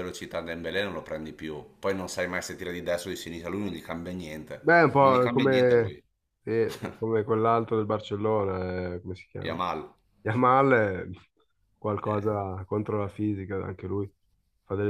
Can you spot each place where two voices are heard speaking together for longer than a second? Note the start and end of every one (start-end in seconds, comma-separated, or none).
4.6-6.0